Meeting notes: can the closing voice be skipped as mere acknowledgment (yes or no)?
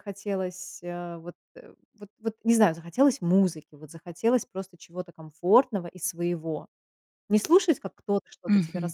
yes